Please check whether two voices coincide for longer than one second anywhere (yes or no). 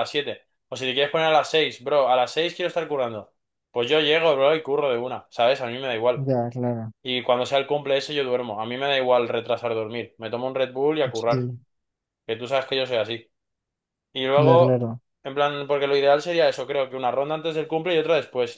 no